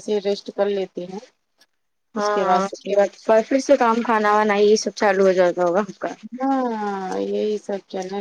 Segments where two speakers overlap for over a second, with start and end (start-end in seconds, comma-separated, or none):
none